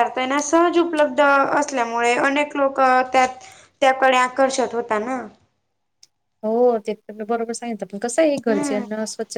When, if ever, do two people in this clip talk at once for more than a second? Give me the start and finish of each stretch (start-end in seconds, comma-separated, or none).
none